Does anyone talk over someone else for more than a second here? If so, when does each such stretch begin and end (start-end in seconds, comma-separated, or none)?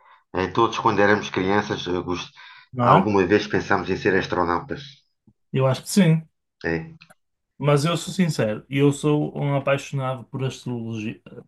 none